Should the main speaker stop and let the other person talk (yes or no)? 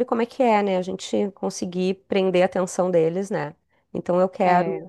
no